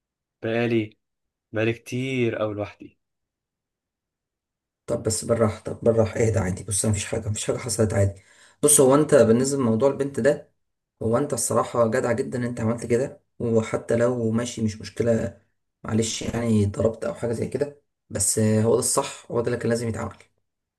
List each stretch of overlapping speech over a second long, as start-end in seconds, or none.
none